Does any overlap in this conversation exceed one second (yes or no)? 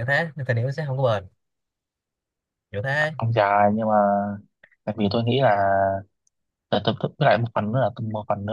no